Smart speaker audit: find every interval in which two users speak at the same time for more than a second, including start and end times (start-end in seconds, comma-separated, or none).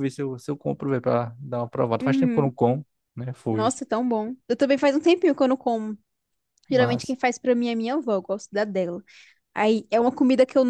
none